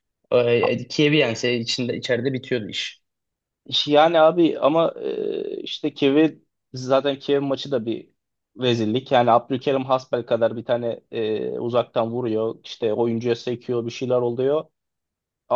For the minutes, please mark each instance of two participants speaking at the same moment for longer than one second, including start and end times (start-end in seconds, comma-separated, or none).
none